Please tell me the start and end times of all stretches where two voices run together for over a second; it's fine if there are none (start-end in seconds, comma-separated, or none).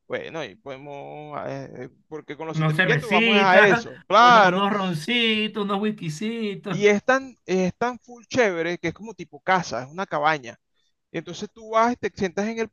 2.5-4.7